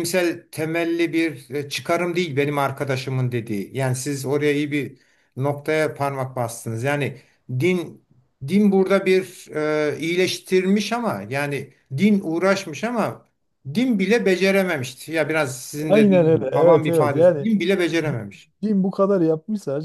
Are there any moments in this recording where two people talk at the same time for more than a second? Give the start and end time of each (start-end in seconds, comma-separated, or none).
15.9-17.5